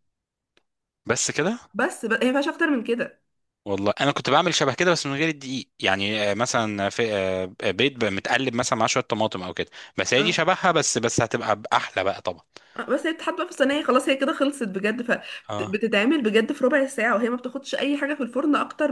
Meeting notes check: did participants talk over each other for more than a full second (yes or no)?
no